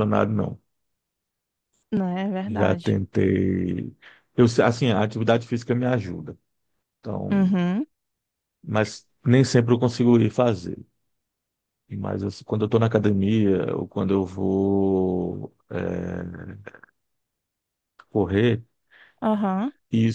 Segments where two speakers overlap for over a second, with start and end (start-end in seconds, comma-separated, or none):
none